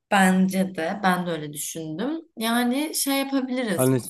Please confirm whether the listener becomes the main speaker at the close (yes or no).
yes